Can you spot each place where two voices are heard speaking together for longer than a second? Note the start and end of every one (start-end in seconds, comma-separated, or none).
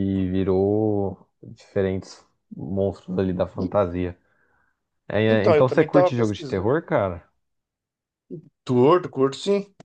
5.3-6.8